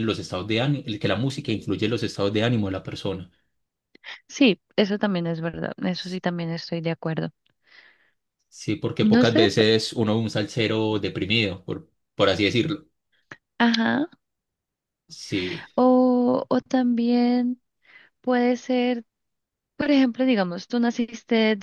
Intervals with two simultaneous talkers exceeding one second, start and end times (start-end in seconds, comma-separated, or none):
none